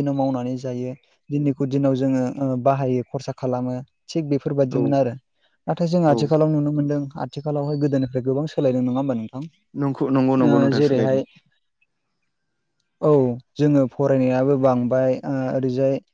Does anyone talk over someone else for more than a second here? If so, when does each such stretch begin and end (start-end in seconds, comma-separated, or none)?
9.8-11.2